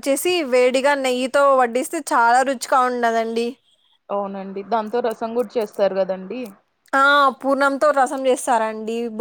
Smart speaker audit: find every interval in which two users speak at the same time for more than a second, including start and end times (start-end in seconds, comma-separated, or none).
none